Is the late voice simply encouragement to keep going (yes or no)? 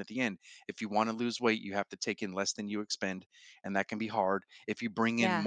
yes